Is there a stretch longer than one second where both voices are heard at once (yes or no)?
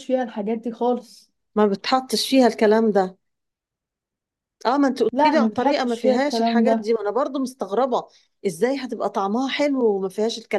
yes